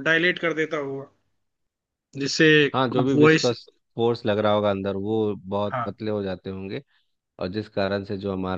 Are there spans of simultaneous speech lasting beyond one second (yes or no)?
no